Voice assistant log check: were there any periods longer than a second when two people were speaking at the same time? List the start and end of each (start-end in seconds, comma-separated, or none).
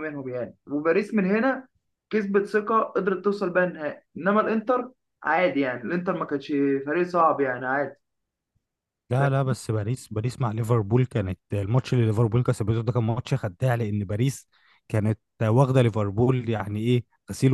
none